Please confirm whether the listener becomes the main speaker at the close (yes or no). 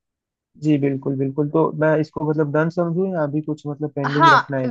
yes